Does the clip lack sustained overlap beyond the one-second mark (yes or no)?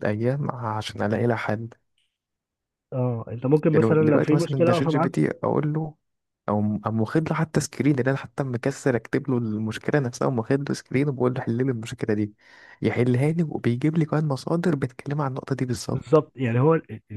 no